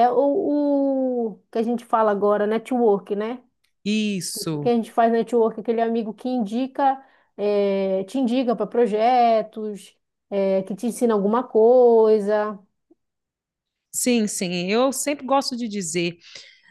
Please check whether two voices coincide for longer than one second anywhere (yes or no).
no